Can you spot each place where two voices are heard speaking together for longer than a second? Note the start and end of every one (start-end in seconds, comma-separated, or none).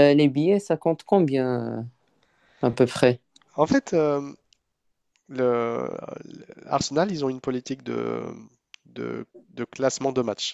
none